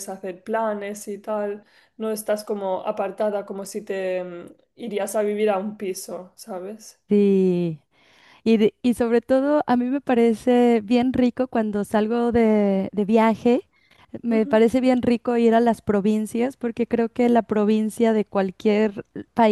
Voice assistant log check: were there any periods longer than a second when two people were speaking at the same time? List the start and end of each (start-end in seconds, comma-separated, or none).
none